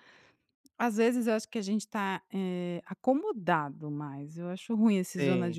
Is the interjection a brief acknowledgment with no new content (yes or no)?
yes